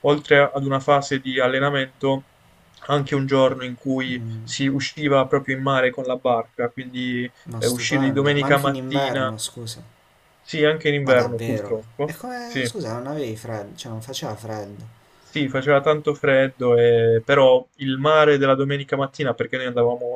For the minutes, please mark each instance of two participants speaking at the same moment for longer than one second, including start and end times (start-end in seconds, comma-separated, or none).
7.4-9.3, 11.1-12.7